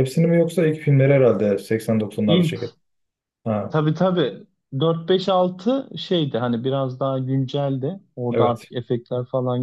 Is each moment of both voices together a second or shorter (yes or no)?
yes